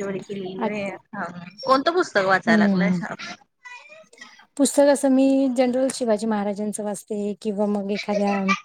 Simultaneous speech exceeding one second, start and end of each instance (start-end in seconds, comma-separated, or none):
none